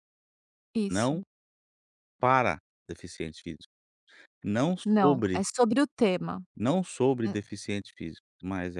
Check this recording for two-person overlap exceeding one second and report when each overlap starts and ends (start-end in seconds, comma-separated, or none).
none